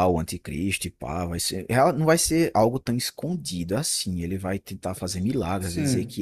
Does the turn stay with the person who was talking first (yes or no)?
yes